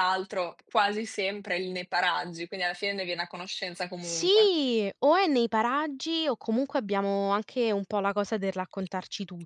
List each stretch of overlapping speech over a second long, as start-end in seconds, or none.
none